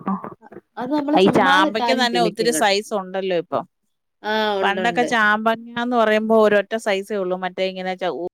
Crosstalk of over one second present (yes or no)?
yes